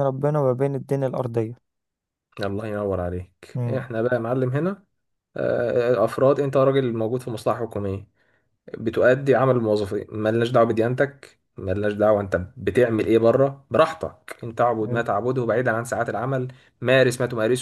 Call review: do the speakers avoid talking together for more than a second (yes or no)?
yes